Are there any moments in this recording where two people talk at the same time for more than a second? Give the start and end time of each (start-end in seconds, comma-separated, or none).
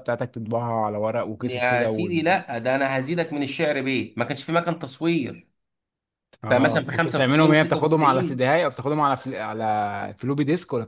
6.5-8.5